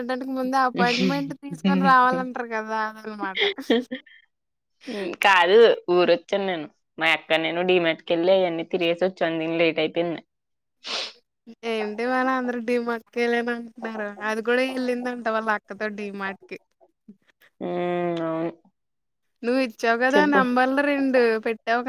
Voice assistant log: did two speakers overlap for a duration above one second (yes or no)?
no